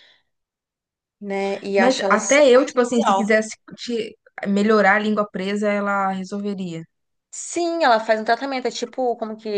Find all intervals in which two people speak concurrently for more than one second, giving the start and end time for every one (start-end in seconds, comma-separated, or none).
1.8-3.3